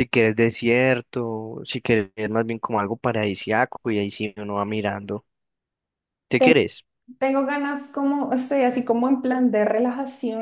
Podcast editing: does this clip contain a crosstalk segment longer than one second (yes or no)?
no